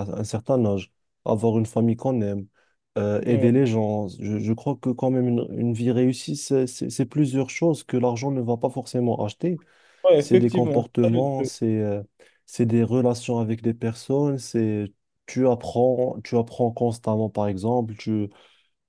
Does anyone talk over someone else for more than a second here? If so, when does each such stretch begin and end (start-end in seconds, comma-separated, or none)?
10.2-11.5